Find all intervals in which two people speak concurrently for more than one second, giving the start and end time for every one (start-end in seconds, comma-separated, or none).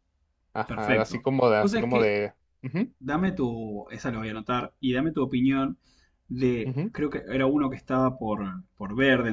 0.7-2.1